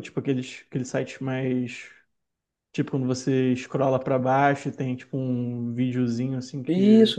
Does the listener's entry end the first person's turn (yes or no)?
yes